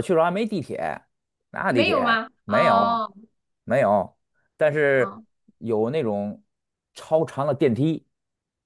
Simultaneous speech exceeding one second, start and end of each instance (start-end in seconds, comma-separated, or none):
1.7-3.0